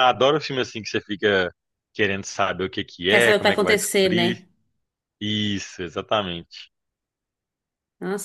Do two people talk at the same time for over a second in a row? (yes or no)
yes